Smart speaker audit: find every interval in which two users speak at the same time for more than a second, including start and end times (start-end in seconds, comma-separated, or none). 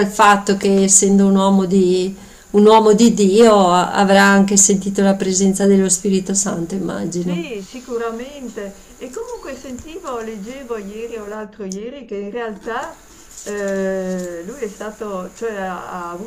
none